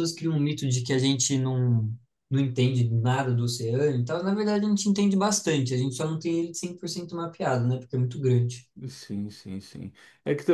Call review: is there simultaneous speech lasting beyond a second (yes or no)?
no